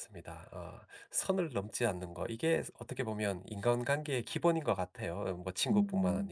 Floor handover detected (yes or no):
no